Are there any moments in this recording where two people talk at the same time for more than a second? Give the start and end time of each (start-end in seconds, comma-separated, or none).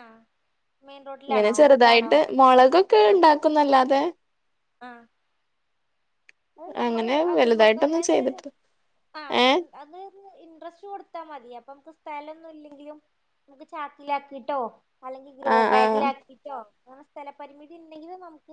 6.9-8.4